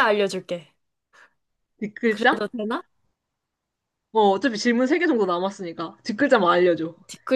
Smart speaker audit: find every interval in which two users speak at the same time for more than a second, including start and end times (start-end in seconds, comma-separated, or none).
none